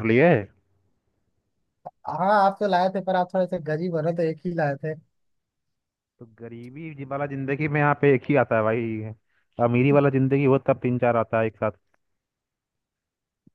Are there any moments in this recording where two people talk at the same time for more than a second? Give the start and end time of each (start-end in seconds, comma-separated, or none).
none